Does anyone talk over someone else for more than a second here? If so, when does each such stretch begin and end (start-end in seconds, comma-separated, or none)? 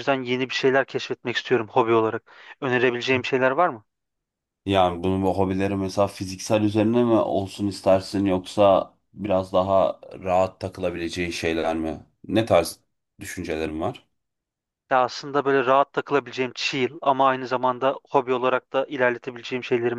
none